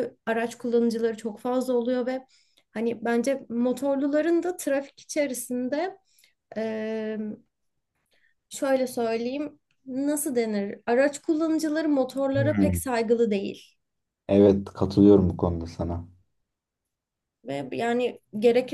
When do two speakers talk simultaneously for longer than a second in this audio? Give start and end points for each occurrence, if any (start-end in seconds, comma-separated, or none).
none